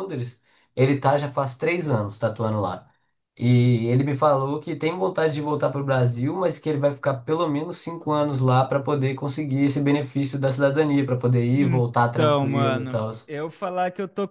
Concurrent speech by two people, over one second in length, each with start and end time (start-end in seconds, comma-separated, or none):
11.5-13.1